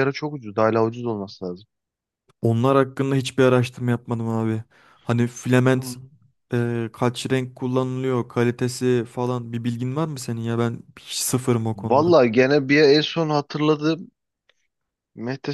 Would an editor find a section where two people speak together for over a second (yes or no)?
no